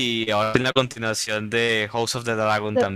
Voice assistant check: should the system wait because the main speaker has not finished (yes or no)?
no